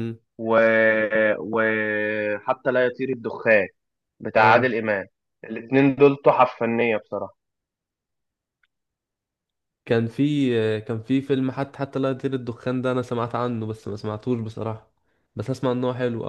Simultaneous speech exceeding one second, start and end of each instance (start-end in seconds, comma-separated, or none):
none